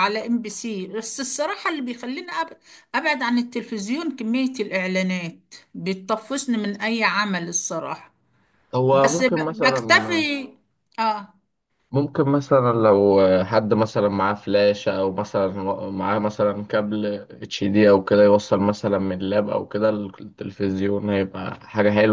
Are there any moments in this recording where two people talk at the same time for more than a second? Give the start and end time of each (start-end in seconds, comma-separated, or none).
8.9-10.3